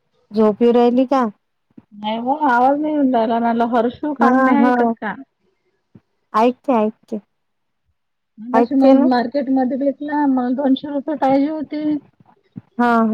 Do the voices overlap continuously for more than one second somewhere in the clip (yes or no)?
no